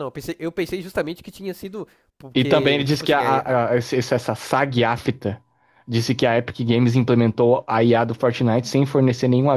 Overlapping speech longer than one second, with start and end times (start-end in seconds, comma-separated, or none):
2.3-3.6